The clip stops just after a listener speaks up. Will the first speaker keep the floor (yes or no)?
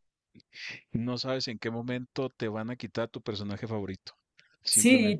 no